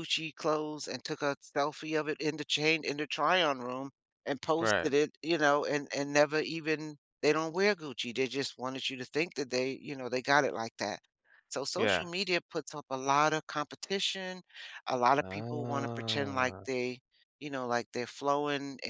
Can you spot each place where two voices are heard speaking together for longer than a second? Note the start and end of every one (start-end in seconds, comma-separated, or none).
15.2-16.6